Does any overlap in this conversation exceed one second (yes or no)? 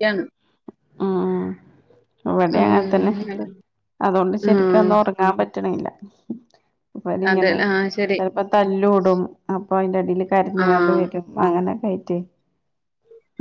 no